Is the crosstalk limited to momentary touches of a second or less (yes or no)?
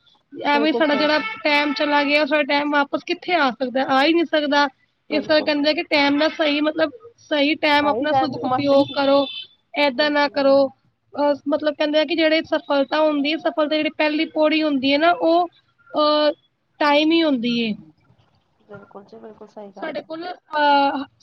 no